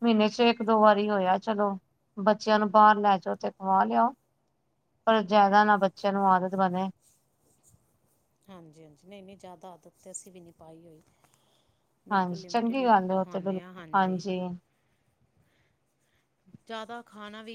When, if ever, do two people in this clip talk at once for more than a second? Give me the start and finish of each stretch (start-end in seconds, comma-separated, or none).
12.1-13.8